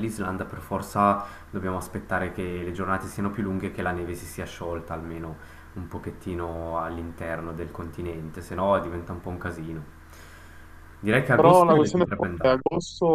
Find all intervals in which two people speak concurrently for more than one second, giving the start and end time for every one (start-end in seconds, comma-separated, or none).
11.3-12.6